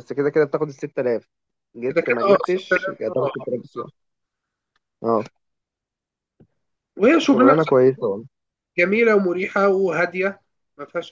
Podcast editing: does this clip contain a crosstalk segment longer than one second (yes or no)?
yes